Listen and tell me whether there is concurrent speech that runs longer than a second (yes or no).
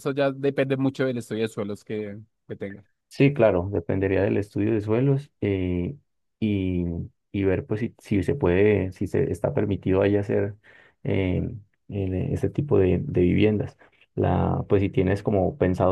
no